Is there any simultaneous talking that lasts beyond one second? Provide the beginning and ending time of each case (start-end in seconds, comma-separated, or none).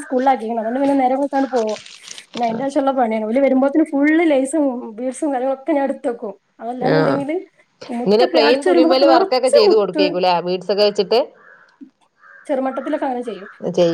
8.0-10.0